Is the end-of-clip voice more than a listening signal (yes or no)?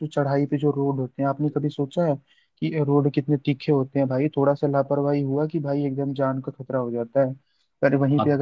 no